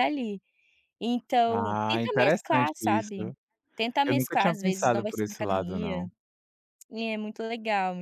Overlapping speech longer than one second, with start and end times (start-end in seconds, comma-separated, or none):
1.5-3.1, 4.0-6.1